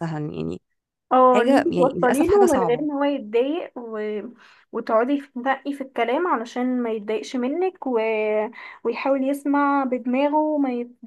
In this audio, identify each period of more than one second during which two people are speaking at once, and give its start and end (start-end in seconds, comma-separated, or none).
1.3-2.9